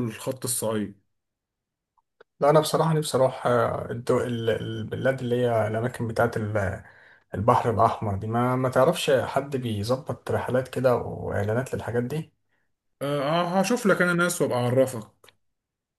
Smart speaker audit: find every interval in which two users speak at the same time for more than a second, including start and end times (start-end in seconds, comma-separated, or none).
none